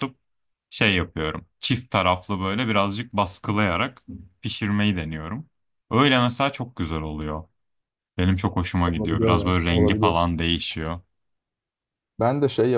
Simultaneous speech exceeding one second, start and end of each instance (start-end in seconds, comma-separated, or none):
8.8-10.2